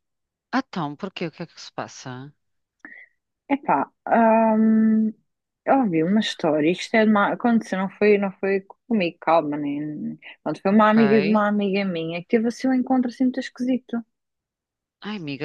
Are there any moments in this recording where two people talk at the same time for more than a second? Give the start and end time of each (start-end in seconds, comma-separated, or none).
none